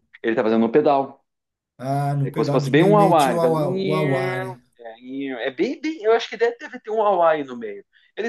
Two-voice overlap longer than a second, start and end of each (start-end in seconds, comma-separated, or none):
2.2-3.5